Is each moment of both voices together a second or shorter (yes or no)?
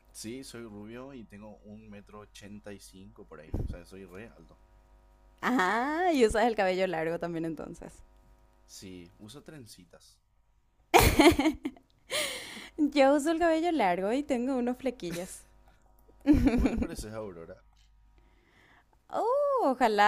yes